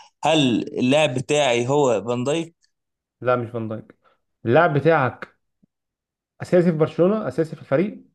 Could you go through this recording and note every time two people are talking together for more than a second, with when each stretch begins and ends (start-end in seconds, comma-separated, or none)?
none